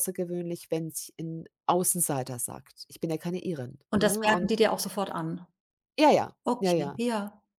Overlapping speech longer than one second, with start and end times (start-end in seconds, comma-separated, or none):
none